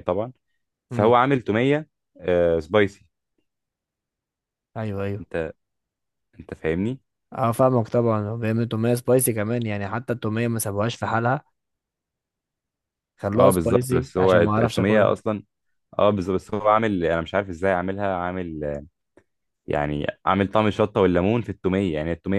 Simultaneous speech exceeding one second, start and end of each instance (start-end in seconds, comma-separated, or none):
13.3-15.2